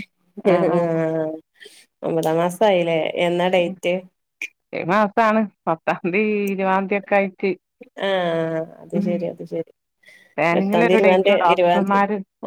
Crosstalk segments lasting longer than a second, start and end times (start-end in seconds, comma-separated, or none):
10.6-11.9